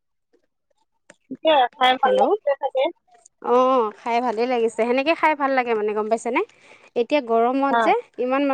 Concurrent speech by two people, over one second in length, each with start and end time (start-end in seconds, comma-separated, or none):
none